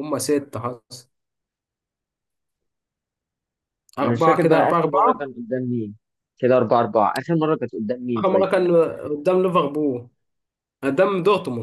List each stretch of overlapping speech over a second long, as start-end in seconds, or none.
4.0-5.3